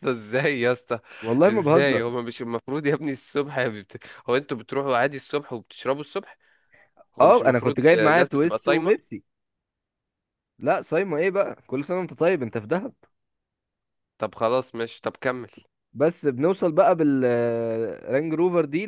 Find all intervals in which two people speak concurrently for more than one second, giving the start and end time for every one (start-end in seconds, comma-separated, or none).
7.2-8.9